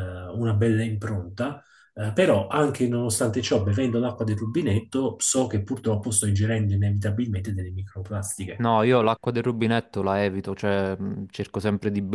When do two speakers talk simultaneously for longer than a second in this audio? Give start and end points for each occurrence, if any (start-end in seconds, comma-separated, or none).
none